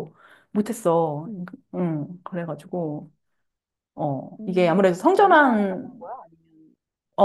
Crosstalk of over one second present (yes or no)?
yes